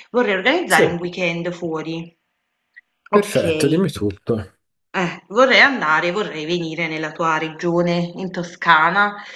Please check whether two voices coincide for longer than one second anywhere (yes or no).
no